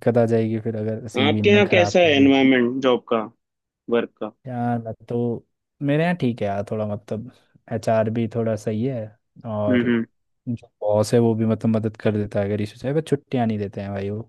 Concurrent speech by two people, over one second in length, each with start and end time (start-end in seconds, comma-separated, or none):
1.2-2.5